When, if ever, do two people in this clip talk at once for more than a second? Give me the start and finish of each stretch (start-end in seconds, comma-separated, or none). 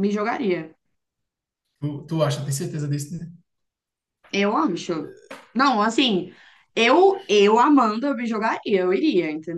none